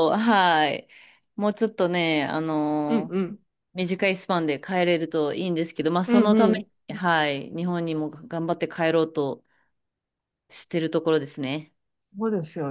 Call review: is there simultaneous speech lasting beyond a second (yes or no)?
no